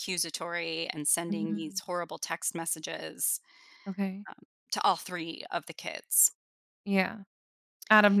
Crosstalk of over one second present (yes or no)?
no